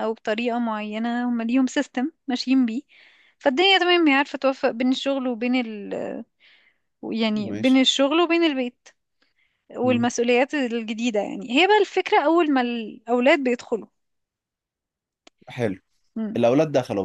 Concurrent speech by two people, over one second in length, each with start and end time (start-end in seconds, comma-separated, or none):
none